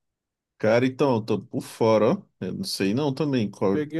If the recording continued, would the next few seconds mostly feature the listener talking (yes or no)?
yes